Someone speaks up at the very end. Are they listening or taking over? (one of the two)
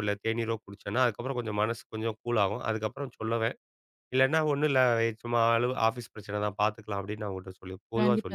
taking over